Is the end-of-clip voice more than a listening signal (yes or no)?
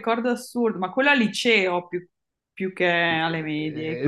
yes